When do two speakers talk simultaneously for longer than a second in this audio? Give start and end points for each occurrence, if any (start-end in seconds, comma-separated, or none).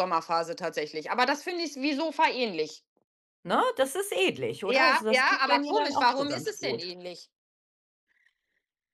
4.7-6.8